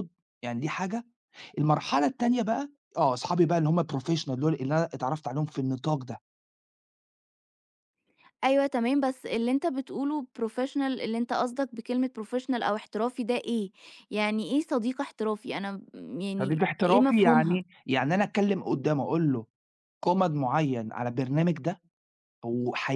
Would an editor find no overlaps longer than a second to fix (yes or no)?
no